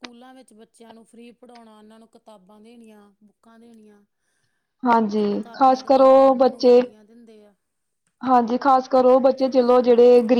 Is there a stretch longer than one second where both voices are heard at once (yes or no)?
yes